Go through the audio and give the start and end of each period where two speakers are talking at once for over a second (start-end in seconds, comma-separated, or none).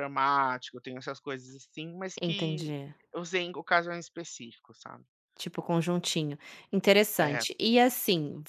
none